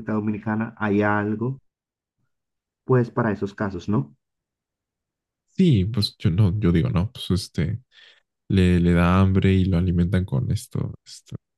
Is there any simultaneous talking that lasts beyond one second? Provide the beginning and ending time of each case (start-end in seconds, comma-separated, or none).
none